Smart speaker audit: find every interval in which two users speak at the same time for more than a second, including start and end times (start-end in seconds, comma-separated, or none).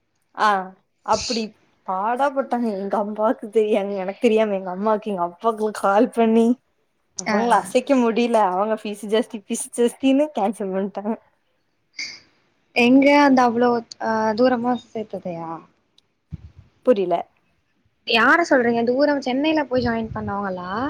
none